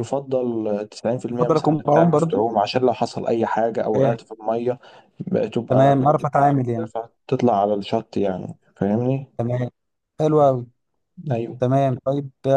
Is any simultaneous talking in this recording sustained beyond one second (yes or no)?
yes